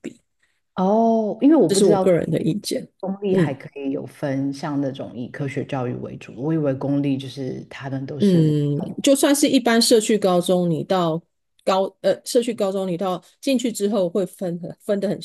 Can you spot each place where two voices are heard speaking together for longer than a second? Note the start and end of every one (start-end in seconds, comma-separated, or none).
none